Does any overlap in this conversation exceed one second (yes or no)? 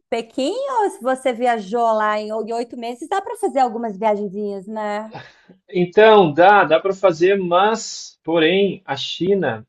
no